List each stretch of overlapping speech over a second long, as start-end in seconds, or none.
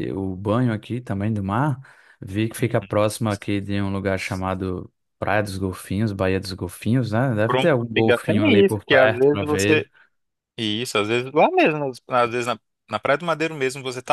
7.5-9.8